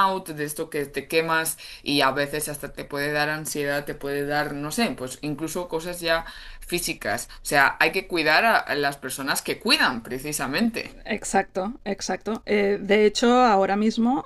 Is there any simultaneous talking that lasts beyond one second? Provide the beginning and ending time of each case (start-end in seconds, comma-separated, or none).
none